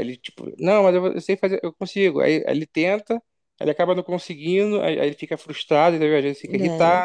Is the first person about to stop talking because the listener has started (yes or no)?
no